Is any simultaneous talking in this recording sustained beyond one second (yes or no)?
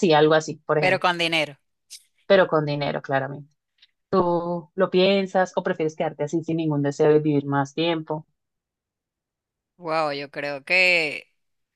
no